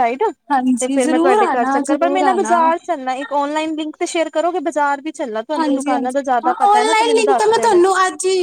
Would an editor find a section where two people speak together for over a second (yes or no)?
yes